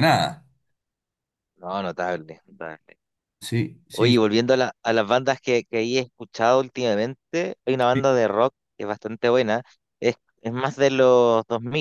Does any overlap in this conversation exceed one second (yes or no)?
no